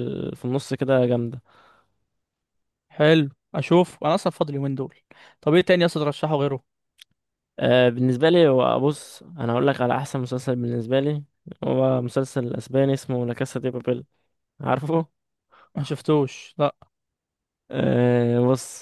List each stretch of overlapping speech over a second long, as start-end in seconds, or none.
none